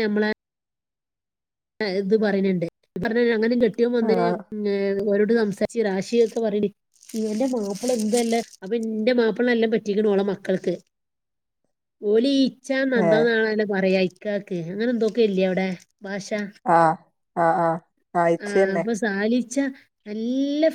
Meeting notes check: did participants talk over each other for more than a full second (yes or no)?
no